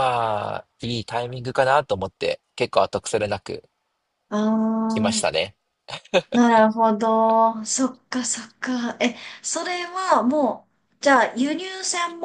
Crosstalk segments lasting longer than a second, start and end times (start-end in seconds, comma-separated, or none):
none